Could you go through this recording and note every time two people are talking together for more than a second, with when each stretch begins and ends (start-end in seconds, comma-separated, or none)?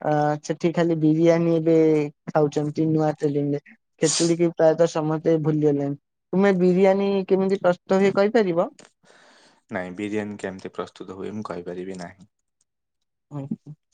none